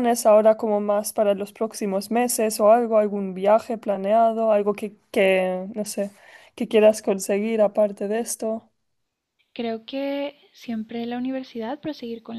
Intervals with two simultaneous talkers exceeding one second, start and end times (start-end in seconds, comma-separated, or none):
none